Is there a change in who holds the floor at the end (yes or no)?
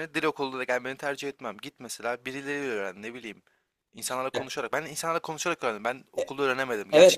yes